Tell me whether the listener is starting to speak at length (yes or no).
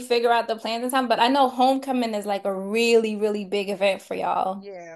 yes